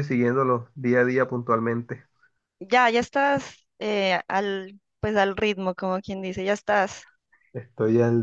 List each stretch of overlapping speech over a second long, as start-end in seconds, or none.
none